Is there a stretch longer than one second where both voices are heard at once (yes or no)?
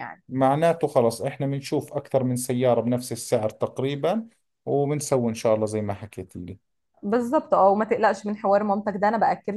no